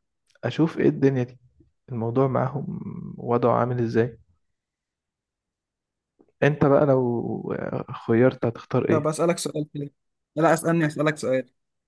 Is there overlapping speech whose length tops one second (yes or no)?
no